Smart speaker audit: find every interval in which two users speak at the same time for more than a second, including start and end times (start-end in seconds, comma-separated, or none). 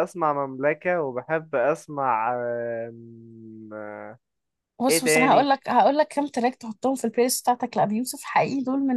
none